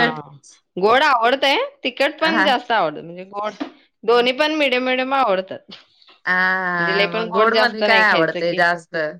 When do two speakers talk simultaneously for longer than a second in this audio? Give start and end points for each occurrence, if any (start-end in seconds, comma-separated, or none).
6.8-8.6